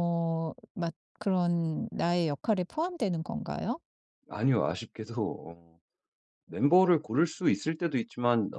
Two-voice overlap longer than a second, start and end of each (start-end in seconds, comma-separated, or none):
none